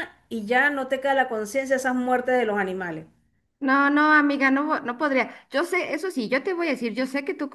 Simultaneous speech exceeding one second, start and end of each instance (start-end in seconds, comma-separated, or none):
none